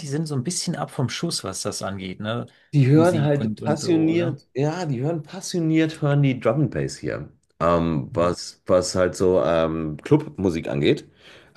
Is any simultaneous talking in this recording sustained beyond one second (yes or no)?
yes